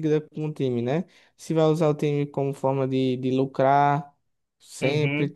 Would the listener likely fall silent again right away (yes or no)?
no